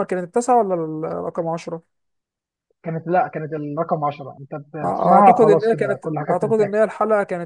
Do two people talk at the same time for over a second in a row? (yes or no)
yes